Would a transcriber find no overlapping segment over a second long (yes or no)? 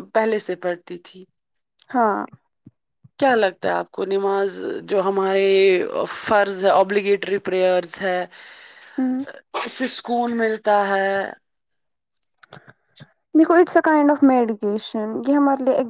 yes